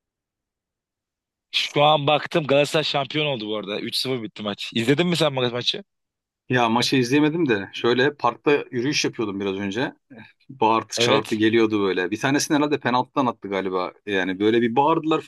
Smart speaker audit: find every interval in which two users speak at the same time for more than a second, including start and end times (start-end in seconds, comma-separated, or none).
none